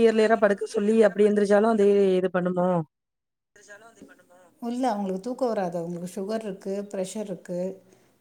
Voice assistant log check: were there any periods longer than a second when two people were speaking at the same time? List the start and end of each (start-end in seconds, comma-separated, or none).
none